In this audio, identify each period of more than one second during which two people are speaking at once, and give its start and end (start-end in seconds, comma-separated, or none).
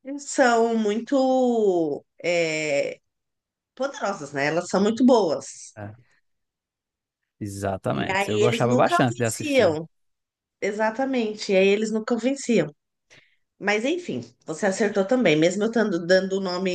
7.9-9.8